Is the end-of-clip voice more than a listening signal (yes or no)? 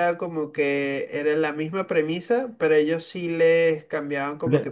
no